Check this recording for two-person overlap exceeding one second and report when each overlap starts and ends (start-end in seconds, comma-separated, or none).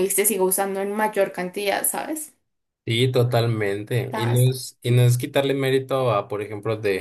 none